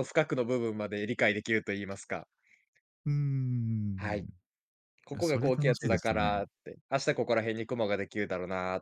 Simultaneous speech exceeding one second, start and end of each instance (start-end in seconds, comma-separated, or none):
5.1-6.4